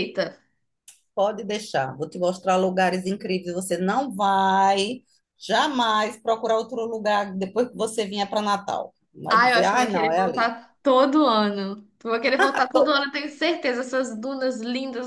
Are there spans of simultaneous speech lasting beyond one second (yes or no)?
yes